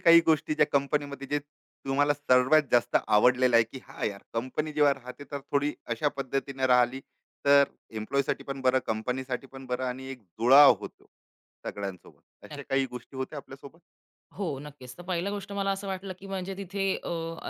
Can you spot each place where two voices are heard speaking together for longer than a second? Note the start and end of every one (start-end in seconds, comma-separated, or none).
none